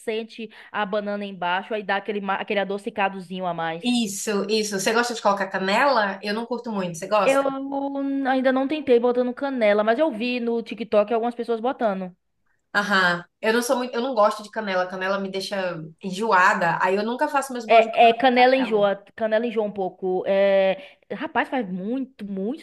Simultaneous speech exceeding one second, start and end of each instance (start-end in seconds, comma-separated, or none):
17.7-18.9